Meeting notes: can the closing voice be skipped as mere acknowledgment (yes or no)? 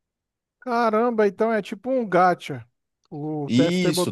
no